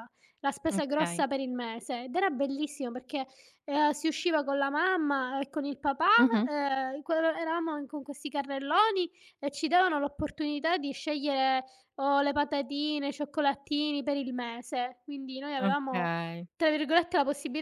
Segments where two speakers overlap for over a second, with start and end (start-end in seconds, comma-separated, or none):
none